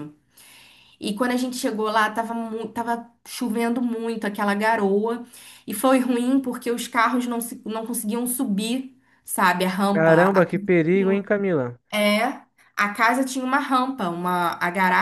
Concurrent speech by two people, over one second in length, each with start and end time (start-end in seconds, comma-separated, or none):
none